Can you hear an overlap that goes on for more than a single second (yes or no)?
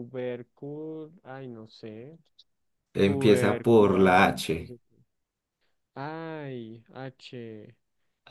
yes